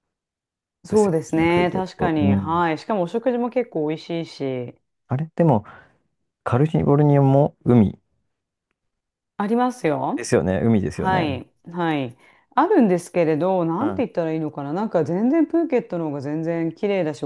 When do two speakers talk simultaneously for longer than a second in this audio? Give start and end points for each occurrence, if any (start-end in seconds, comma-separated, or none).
0.9-2.6